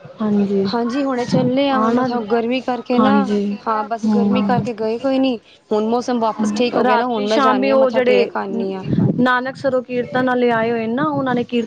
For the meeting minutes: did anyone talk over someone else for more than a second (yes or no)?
yes